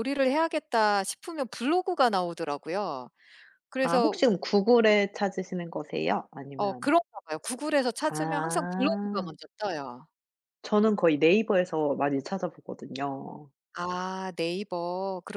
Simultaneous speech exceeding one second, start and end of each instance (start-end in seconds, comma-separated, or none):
8.1-9.3